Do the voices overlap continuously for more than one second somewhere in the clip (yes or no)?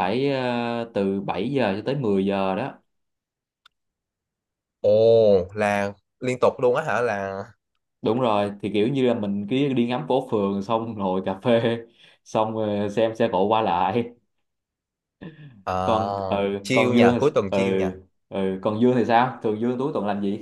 yes